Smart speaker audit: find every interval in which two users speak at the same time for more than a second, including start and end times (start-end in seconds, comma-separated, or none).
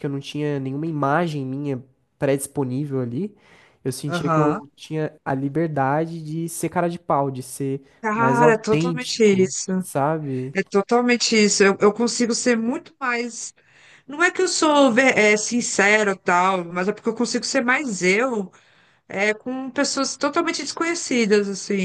8.0-9.7